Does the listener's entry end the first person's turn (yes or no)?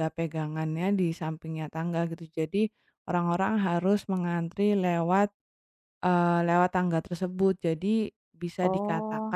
no